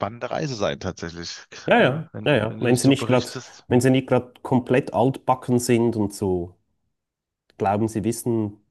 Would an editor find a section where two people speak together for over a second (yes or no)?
yes